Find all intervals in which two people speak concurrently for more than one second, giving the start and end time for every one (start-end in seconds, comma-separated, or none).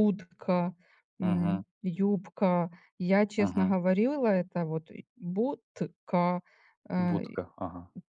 none